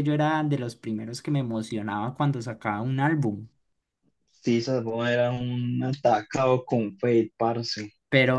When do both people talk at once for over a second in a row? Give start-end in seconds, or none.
none